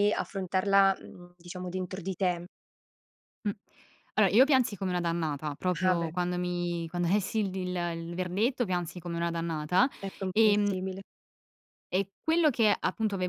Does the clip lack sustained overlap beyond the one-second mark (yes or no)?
yes